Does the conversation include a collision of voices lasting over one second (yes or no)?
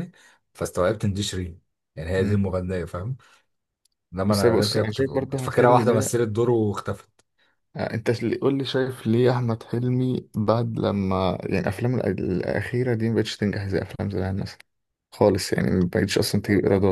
yes